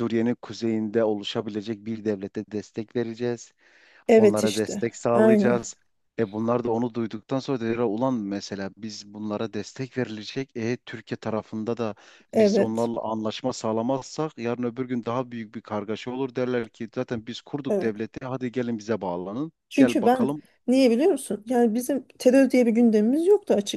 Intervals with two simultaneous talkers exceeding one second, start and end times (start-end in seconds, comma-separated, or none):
4.2-5.7